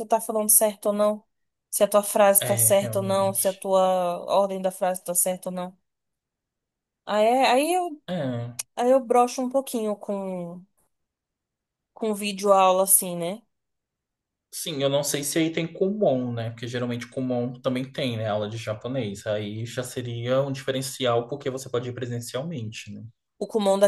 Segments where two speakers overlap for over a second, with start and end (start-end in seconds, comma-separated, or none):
2.4-3.6